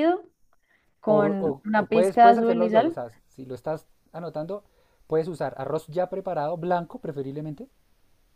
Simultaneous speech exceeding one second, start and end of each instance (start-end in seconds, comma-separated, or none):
1.1-3.0